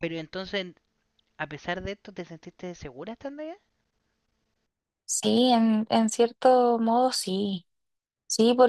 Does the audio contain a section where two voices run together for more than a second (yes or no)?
no